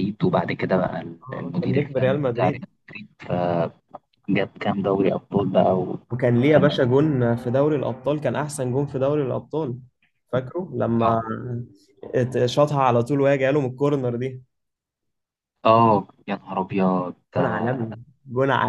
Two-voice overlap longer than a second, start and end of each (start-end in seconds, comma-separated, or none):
1.3-2.7